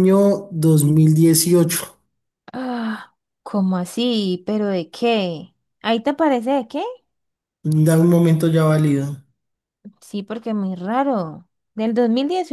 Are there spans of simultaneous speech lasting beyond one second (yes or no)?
no